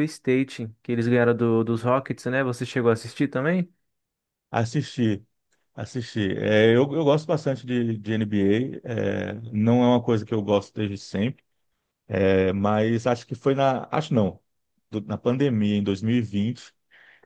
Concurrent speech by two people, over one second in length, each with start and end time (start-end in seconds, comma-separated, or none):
none